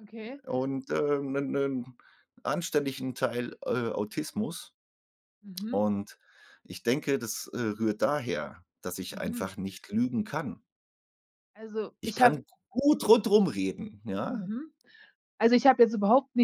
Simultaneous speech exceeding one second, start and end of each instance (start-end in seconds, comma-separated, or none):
none